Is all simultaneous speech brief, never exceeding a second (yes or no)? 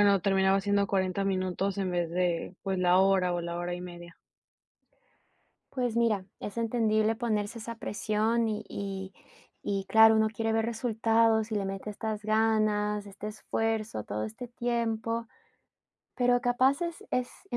yes